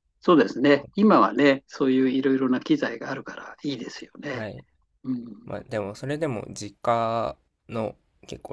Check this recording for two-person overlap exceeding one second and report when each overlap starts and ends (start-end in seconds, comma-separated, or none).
none